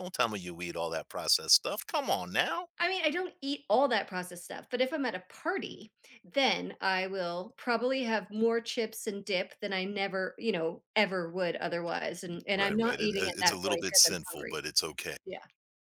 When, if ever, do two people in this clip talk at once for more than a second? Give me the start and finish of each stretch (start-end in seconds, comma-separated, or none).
12.5-14.6